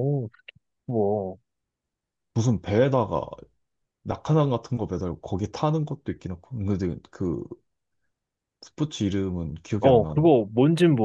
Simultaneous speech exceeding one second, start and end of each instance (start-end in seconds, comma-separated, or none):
none